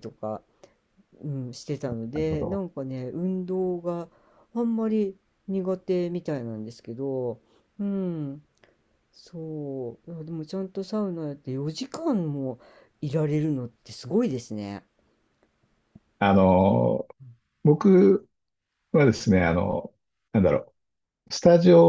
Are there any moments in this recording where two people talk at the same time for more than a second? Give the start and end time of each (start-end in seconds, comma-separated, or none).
none